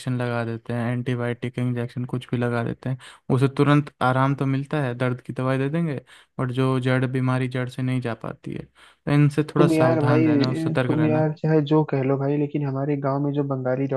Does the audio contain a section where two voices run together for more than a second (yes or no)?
yes